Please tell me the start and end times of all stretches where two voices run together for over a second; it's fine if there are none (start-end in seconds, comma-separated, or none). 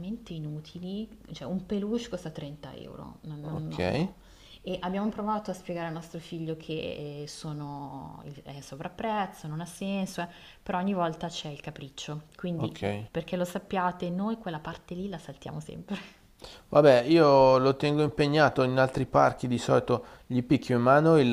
none